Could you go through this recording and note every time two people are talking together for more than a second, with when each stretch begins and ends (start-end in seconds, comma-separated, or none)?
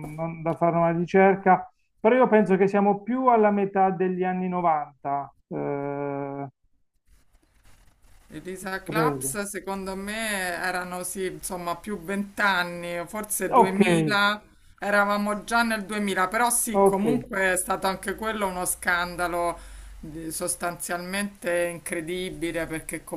none